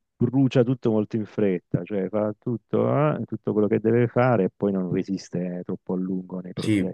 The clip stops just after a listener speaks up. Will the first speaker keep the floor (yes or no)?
no